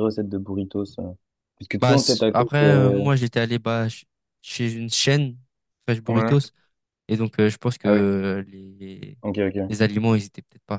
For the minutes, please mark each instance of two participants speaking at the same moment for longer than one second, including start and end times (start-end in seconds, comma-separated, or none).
1.8-3.0